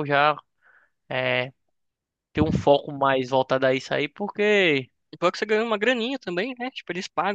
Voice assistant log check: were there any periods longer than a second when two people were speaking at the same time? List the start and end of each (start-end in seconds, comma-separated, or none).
none